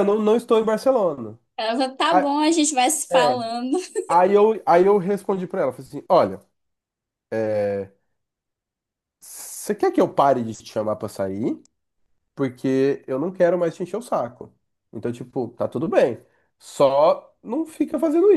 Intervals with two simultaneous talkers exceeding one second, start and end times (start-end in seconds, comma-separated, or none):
none